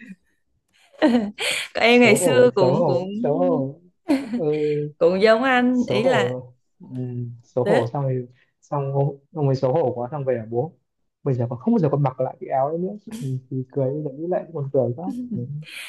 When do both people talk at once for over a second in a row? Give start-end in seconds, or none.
1.9-3.1